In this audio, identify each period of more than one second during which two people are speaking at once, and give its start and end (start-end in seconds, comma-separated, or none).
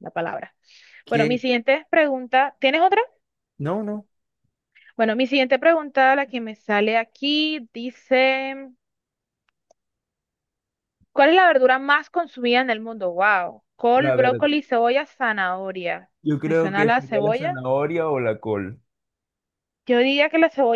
16.2-17.6